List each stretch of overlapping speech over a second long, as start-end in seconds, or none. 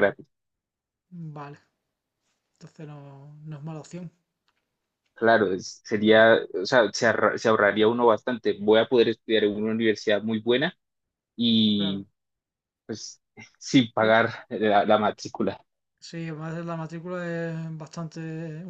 none